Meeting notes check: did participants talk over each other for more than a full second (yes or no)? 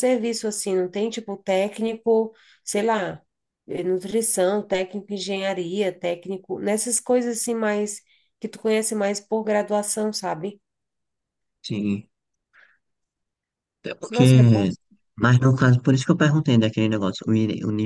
no